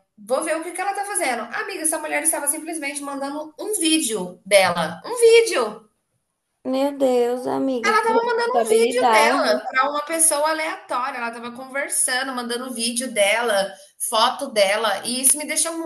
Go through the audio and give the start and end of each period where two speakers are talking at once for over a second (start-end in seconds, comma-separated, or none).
7.8-9.6